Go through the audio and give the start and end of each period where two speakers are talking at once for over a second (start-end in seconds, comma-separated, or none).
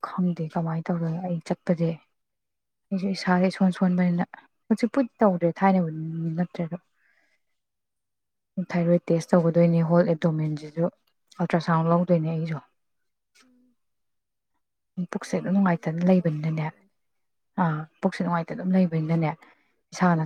15.2-16.7